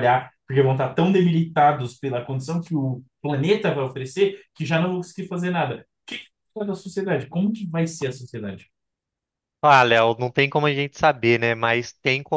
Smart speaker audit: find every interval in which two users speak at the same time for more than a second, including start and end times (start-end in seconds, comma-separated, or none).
none